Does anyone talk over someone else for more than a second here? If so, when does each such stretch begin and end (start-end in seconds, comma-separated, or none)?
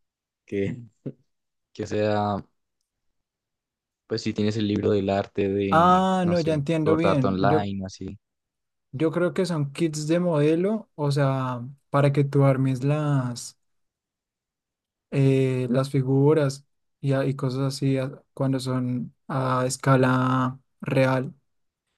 5.7-7.7